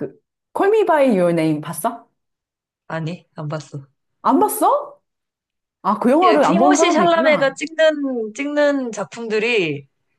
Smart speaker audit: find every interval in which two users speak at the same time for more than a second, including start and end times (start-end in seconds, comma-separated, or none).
6.2-7.5